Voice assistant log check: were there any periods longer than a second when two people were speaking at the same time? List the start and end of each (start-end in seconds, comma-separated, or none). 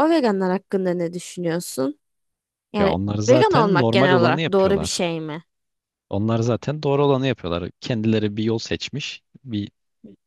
2.8-5.0